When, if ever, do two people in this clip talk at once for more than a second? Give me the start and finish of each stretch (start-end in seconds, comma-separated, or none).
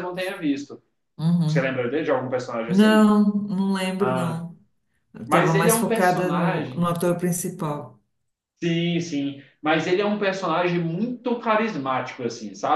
5.3-6.8